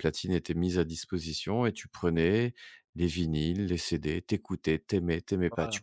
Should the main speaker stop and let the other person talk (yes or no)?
no